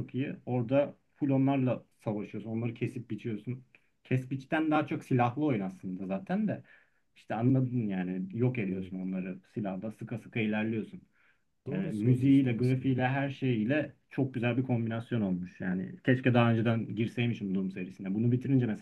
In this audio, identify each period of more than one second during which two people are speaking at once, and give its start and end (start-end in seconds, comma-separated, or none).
11.7-13.1